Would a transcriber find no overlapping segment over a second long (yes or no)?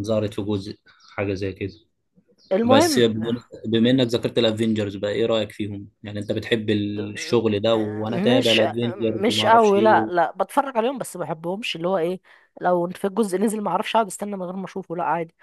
no